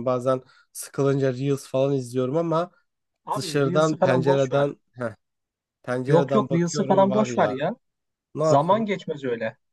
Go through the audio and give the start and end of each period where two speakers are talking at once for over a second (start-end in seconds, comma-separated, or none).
3.4-4.7, 6.1-7.6